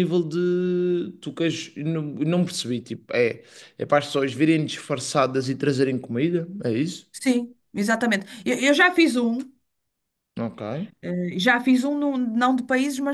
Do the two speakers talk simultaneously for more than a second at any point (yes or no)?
no